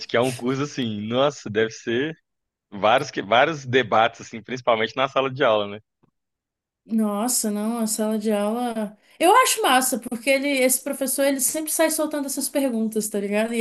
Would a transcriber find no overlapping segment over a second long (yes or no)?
yes